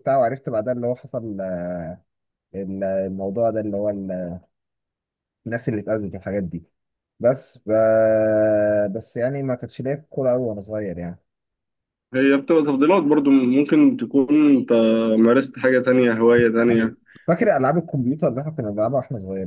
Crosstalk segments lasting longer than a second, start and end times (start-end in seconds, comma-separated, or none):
none